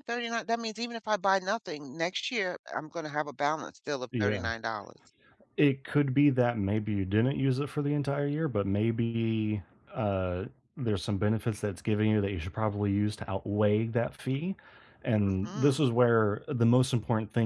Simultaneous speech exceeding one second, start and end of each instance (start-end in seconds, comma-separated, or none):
none